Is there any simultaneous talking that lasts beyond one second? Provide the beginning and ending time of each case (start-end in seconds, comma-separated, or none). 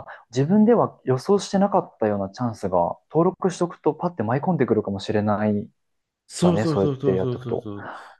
6.4-7.7